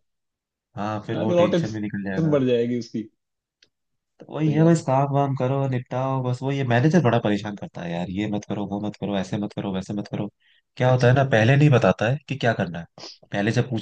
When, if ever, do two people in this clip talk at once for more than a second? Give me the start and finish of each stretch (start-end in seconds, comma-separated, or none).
1.1-2.4